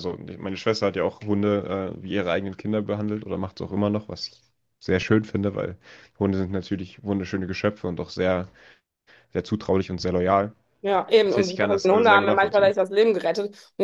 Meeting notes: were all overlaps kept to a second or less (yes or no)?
no